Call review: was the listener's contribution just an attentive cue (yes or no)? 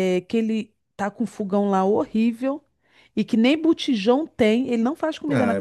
no